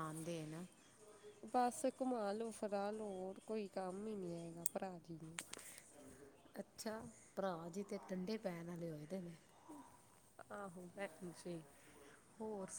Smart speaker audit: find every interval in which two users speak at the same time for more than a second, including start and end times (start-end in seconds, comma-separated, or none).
none